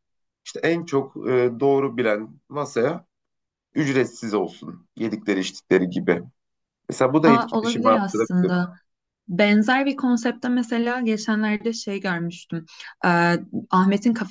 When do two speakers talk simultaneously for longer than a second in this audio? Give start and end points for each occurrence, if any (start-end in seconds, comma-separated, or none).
7.2-8.5